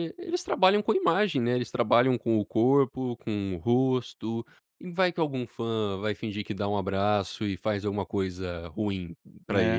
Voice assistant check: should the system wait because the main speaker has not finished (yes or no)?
no